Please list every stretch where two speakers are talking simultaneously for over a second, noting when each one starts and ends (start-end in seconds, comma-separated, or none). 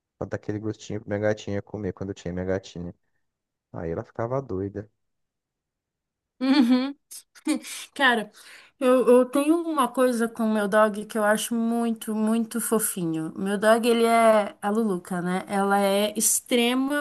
none